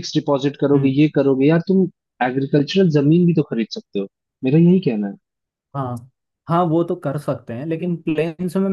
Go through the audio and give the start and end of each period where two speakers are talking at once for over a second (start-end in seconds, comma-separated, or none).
none